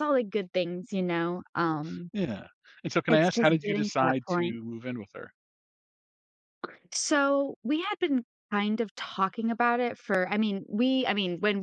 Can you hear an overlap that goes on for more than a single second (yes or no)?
yes